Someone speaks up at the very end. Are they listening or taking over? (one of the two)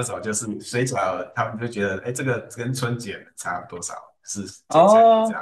taking over